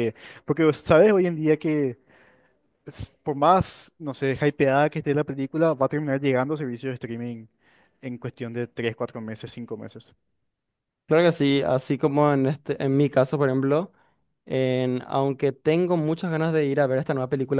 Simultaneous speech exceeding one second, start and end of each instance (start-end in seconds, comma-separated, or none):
none